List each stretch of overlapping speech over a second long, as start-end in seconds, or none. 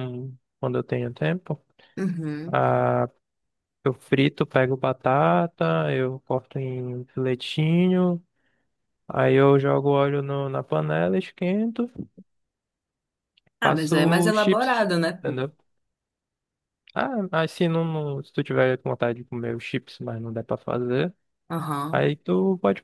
13.6-15.4